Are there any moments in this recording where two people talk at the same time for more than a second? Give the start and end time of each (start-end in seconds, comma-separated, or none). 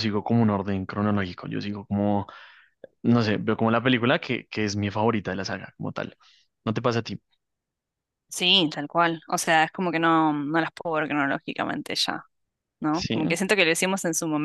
none